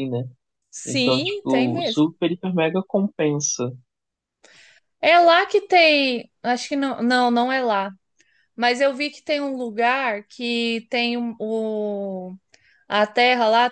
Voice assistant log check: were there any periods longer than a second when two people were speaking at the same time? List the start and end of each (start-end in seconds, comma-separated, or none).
0.9-2.1